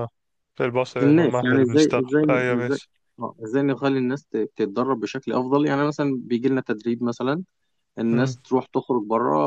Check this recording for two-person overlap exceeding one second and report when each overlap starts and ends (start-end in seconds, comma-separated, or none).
1.0-2.8